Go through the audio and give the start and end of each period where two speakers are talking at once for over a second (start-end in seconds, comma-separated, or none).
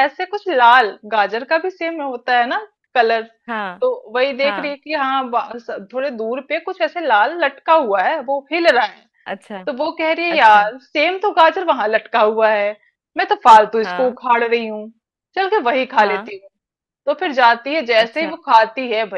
none